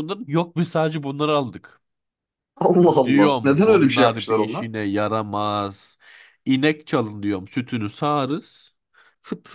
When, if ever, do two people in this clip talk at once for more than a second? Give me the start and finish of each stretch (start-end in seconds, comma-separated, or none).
3.0-4.7